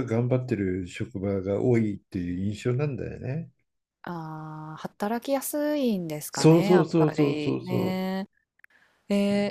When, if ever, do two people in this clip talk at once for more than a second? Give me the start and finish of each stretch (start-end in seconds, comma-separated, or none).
6.3-8.0